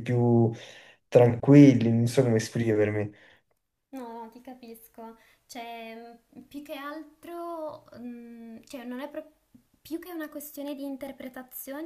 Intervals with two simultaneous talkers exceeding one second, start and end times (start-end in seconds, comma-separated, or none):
none